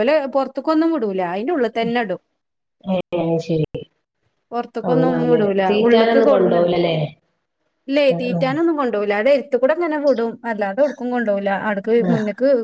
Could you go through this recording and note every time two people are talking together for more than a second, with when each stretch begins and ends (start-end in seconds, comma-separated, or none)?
4.9-6.6